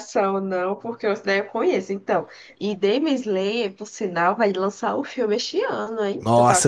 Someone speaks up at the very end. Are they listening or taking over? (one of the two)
taking over